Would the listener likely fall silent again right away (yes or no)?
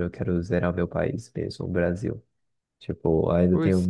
yes